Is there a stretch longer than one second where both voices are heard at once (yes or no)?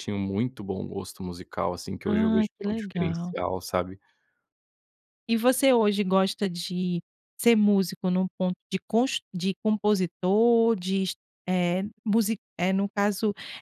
yes